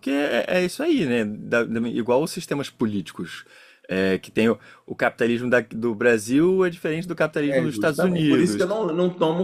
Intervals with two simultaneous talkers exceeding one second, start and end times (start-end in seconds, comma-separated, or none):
7.5-8.8